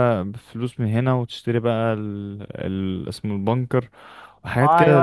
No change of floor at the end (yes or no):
no